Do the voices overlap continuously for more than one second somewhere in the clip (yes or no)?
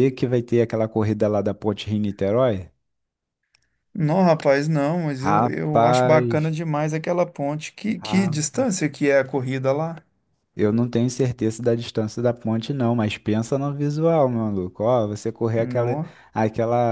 yes